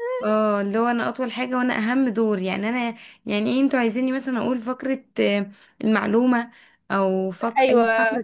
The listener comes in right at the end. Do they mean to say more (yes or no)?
no